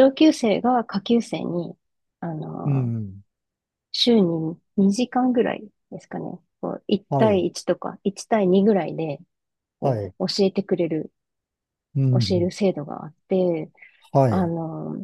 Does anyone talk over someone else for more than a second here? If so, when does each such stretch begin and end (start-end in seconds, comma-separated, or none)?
none